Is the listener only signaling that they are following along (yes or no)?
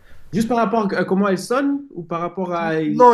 no